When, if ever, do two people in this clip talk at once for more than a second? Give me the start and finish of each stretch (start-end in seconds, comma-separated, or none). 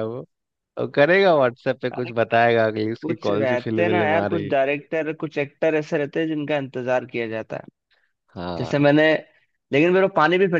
3.0-4.5